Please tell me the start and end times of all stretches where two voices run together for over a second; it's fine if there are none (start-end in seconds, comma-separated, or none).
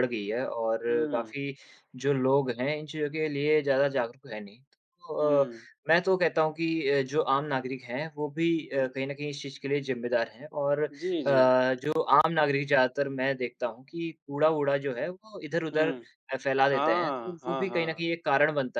16.7-18.0